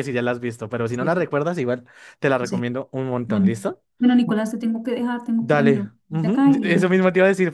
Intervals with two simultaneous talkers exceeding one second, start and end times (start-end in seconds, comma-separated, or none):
5.4-7.0